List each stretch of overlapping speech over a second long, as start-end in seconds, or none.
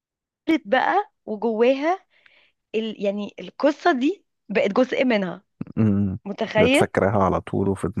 none